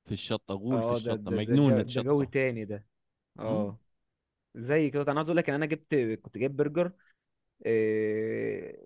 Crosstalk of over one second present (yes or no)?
yes